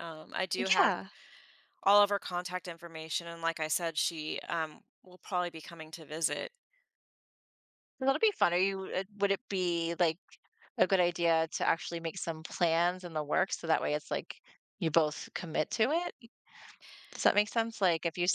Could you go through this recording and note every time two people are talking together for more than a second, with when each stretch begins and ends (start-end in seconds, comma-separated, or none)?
none